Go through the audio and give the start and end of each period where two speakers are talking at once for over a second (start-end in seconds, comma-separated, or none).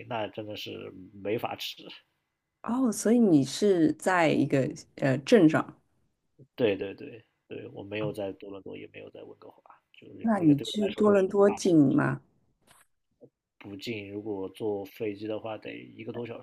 10.2-12.0